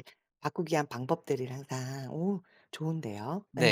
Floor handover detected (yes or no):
yes